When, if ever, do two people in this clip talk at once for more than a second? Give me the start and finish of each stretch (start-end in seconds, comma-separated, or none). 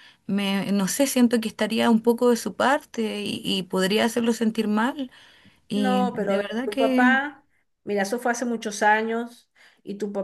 5.7-7.2